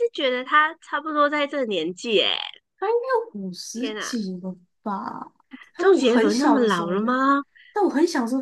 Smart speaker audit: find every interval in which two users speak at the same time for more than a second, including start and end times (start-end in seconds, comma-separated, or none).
5.8-7.1